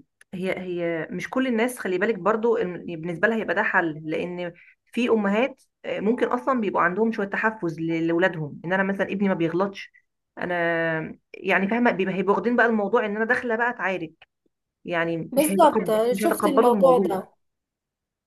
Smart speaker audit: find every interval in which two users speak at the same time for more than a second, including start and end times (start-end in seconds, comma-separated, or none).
15.3-17.0